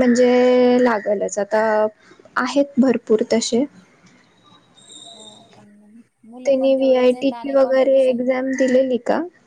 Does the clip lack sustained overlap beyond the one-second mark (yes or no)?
no